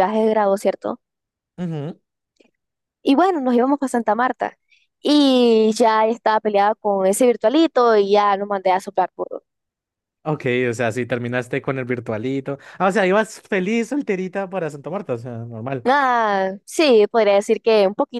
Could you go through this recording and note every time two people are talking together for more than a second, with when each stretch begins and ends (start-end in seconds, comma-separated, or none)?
none